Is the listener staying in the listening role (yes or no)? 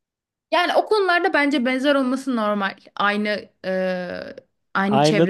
no